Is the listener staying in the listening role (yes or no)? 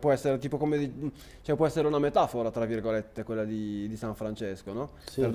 yes